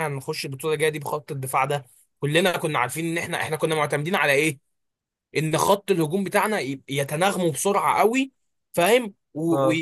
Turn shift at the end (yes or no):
no